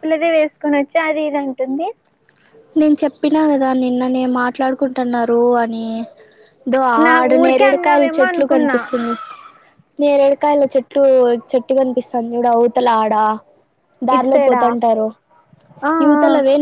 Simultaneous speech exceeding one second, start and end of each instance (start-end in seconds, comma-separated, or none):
7.2-8.8